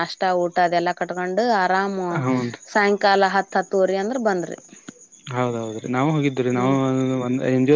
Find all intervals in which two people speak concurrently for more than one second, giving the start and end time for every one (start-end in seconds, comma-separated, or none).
none